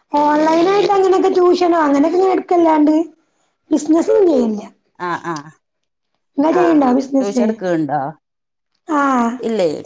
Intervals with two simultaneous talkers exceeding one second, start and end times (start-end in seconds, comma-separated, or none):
none